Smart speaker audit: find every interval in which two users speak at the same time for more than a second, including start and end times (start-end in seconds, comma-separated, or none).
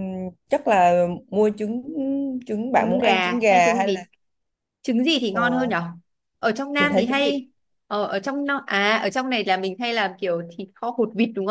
2.8-4.0